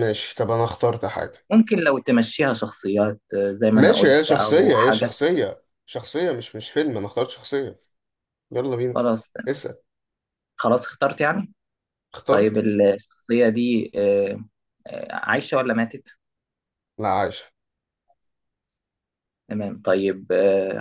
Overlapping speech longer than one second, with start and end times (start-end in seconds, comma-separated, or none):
3.8-5.2